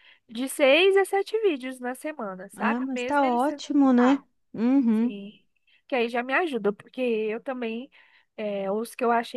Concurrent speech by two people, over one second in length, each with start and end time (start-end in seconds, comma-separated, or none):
2.6-4.2